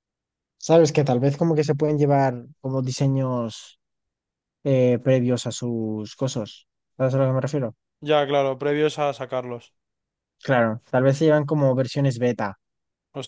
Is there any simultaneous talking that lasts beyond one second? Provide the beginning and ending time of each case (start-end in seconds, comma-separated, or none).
none